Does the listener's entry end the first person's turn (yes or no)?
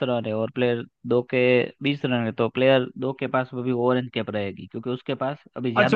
yes